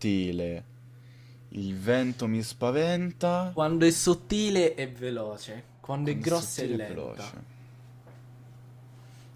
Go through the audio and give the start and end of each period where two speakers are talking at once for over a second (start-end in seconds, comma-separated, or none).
6.0-7.4